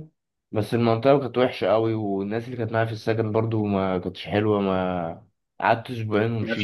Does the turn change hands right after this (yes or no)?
no